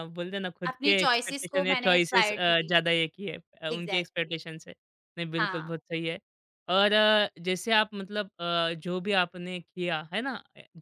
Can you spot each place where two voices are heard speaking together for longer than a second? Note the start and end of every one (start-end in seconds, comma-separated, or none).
0.7-2.7